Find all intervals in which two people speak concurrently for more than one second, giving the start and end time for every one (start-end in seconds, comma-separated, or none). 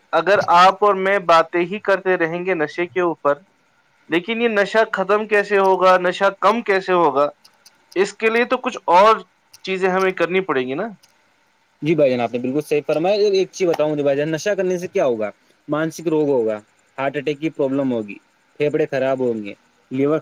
none